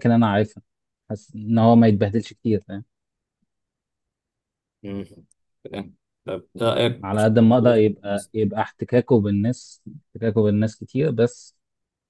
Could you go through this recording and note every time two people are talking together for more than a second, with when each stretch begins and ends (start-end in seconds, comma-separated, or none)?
7.0-8.3